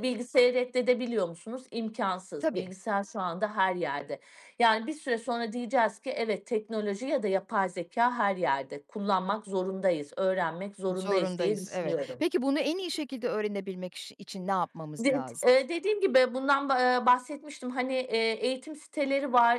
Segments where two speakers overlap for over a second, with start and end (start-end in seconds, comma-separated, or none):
10.9-12.2